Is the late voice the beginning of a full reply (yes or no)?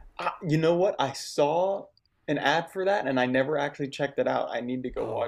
yes